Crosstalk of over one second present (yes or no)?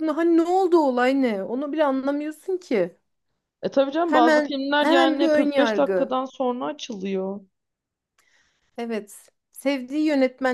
yes